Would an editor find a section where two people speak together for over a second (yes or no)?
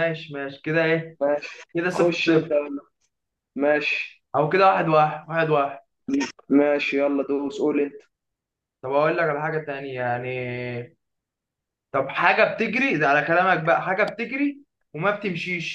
no